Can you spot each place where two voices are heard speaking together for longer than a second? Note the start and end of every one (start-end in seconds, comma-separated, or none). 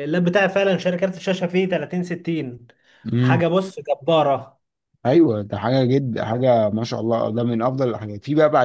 none